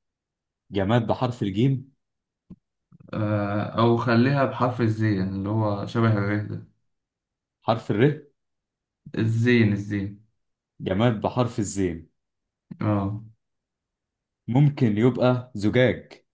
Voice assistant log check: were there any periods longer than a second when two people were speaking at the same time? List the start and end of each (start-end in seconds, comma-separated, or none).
none